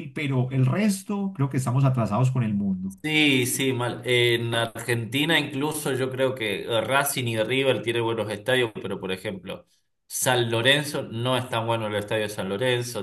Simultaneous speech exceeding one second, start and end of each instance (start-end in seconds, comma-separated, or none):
none